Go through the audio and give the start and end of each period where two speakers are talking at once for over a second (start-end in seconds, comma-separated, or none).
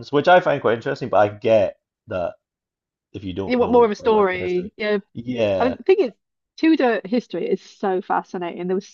3.5-4.7